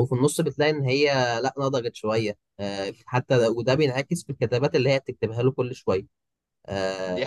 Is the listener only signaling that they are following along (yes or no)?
no